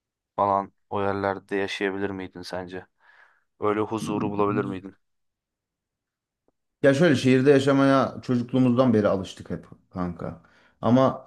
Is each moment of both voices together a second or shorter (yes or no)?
yes